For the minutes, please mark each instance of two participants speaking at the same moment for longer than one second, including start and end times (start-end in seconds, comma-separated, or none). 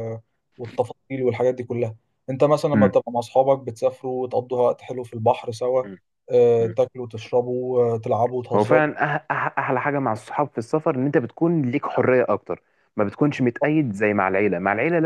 none